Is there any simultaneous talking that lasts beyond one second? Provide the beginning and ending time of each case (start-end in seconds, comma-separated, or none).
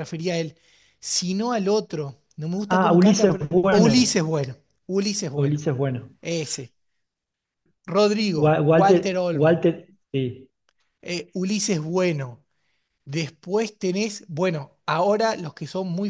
2.7-4.1, 8.4-9.7